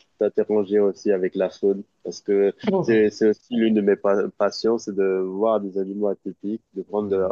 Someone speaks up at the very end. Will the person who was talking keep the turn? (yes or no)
yes